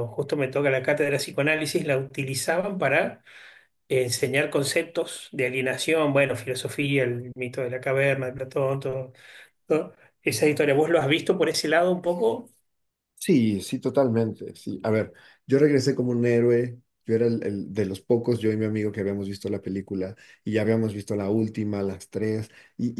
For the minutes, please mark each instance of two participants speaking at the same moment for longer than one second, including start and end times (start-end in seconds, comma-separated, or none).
none